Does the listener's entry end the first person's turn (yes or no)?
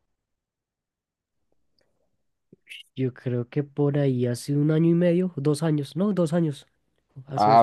yes